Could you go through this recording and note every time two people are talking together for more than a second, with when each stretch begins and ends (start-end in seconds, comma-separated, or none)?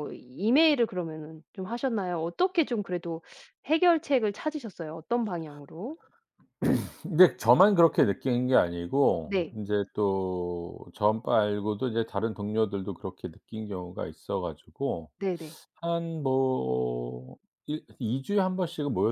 none